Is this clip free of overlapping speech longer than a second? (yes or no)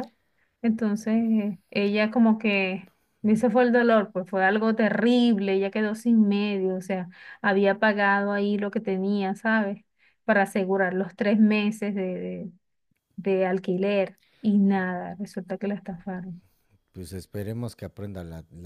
yes